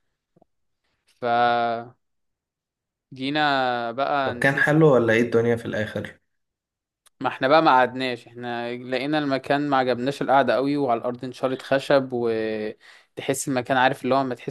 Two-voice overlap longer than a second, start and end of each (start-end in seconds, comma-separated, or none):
none